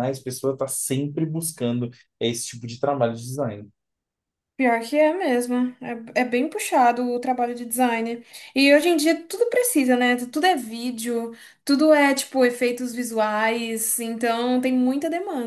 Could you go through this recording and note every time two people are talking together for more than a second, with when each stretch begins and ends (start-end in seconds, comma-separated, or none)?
none